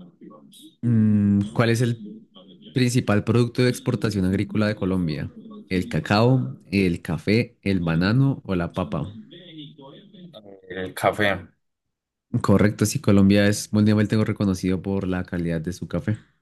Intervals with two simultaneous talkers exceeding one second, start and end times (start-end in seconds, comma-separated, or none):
0.8-2.0